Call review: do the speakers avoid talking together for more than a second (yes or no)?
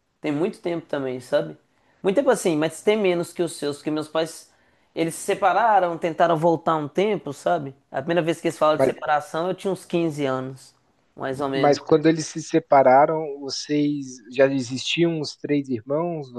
yes